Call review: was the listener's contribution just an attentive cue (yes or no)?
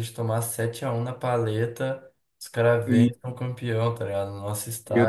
no